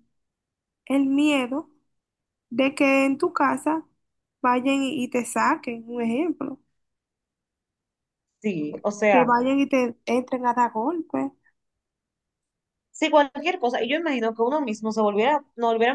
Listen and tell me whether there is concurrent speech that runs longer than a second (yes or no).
no